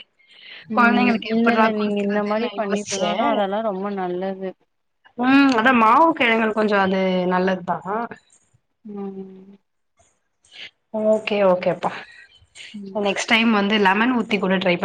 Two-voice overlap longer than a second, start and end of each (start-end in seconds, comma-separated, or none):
0.8-3.1